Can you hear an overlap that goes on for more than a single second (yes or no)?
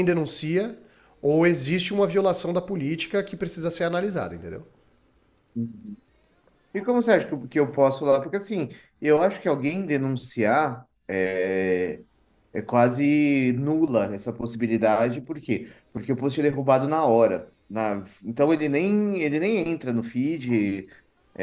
no